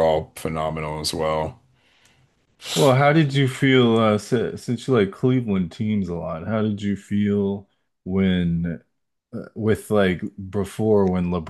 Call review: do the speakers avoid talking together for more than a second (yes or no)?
yes